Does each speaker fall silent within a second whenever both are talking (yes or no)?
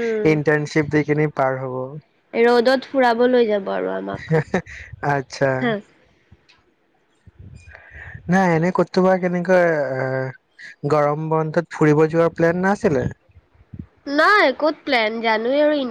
yes